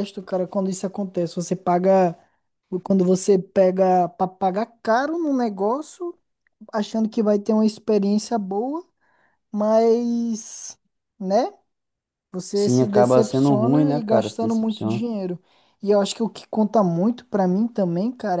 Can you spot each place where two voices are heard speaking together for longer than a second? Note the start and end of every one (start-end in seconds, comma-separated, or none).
12.5-15.0